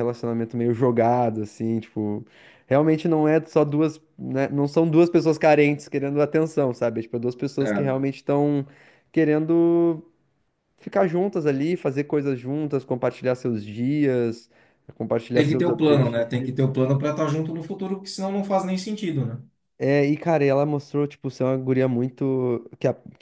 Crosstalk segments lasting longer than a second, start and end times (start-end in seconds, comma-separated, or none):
15.3-16.6